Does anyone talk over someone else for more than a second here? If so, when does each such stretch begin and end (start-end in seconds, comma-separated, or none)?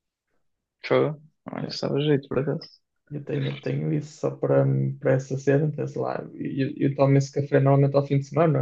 none